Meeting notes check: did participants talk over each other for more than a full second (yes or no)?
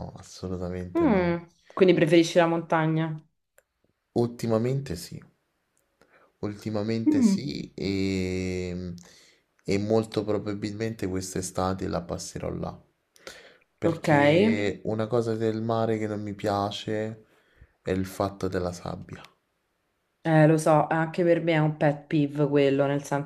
no